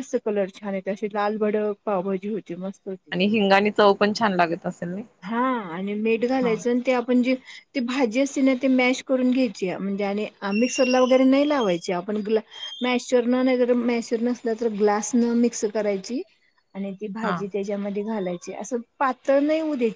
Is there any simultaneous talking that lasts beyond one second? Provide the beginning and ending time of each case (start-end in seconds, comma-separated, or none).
none